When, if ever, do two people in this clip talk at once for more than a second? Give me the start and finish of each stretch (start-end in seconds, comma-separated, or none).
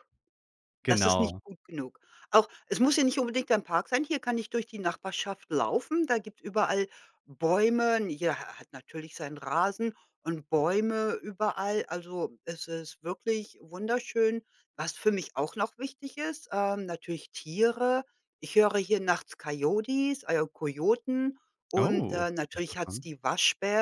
21.8-23.1